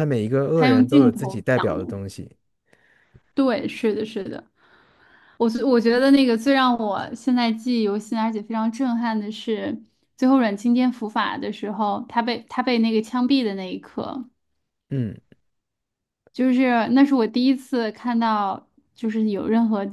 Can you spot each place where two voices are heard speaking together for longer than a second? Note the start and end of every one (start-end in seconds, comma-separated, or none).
0.6-1.9